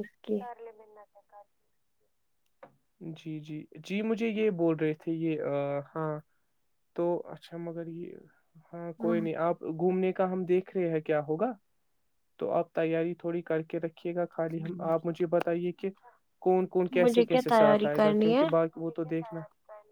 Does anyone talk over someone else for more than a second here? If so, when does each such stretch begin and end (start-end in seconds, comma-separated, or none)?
17.0-18.4